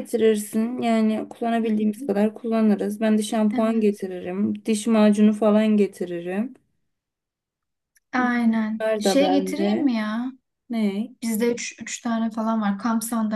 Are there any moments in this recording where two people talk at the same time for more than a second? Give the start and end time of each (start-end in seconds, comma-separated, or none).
8.2-9.8